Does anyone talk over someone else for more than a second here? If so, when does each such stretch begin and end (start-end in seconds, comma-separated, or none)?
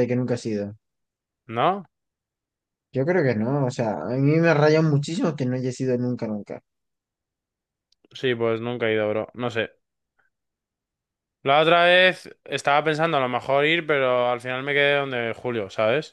none